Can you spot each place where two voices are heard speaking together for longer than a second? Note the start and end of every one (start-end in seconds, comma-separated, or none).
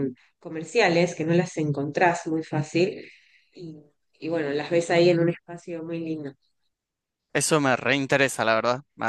none